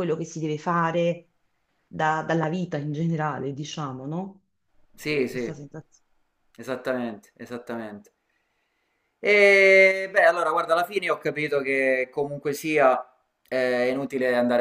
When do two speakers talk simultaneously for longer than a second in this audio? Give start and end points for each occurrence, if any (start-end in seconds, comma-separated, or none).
none